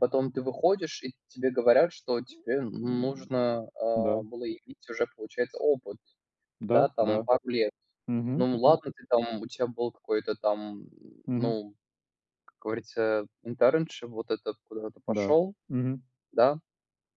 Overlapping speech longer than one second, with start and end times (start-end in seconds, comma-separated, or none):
none